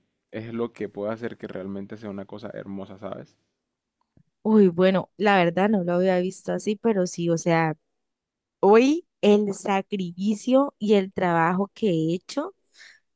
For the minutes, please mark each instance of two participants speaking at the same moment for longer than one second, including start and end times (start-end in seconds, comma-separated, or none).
none